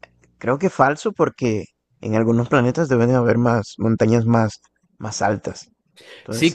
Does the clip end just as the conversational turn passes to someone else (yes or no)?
yes